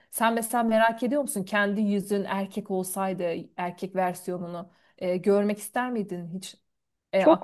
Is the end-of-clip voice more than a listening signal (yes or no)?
yes